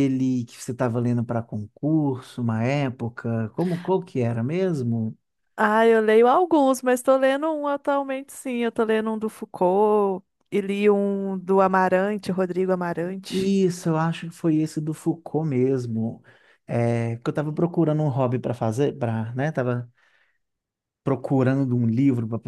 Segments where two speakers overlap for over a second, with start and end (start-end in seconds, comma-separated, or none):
none